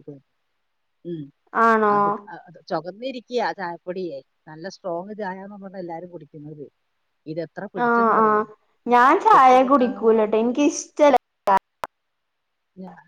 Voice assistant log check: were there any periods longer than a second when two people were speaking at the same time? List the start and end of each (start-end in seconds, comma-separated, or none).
9.3-10.5